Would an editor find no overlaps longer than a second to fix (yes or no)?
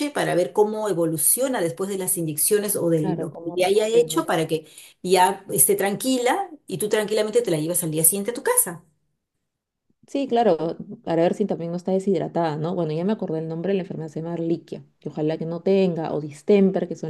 no